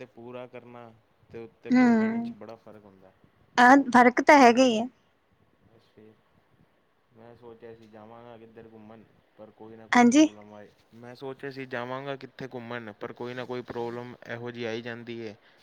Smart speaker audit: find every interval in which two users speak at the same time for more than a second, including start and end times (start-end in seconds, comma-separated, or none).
none